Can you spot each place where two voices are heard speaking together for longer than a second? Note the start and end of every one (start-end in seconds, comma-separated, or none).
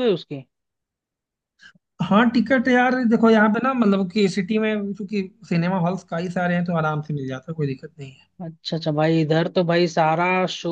none